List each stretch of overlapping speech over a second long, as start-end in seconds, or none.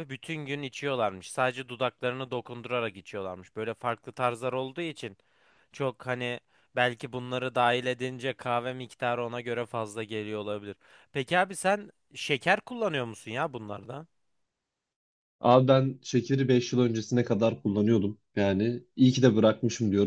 none